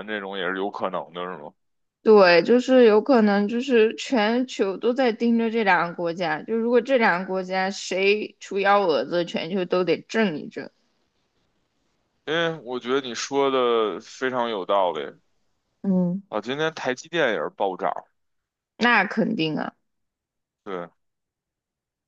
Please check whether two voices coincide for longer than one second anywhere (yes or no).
no